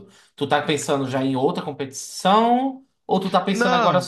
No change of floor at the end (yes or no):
yes